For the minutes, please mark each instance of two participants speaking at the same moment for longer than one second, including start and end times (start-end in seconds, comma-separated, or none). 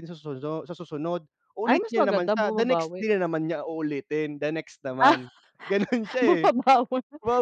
1.6-3.0